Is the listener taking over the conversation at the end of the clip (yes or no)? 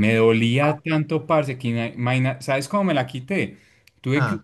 no